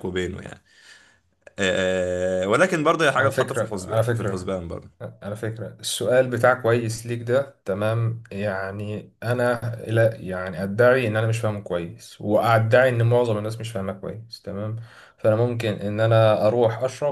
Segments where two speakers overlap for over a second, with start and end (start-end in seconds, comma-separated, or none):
3.2-4.5